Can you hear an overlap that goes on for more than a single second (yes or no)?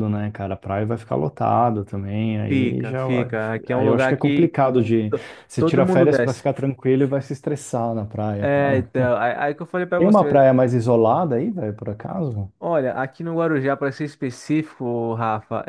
yes